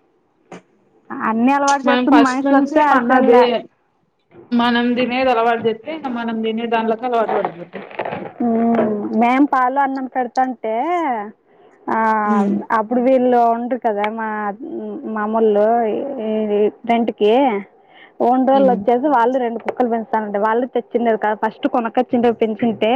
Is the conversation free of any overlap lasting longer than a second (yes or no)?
no